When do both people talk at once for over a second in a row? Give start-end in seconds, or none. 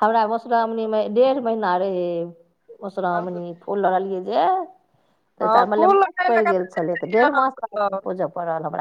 5.4-8.0